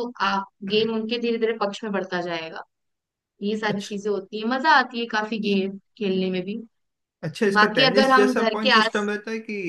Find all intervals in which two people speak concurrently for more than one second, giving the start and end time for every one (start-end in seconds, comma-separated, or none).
7.6-9.1